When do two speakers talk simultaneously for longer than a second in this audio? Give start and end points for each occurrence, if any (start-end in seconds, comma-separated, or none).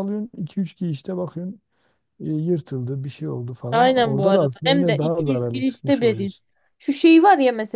3.7-6.3